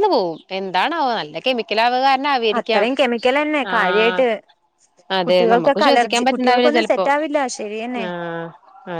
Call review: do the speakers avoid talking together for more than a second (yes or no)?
no